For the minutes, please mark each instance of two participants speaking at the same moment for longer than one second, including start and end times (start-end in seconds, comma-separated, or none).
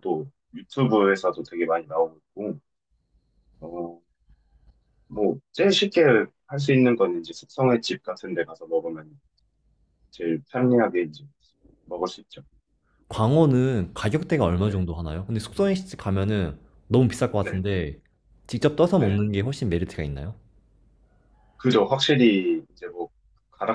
none